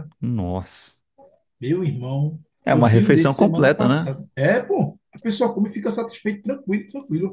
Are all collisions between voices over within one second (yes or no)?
no